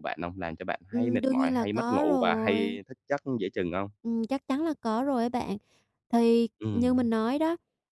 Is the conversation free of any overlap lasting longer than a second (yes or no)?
no